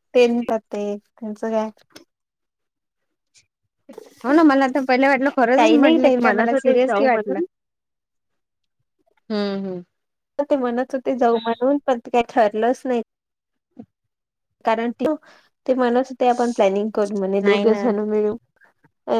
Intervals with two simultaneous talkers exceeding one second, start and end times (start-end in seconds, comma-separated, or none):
5.5-7.4